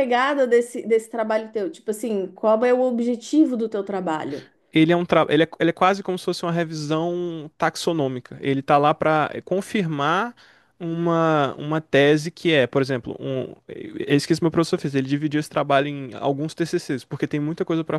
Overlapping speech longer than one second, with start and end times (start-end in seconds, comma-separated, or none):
none